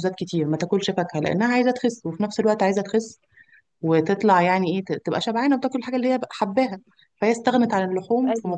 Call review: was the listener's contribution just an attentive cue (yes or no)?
yes